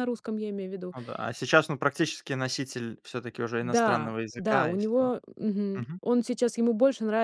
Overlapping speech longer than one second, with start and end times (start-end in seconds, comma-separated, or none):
3.6-5.0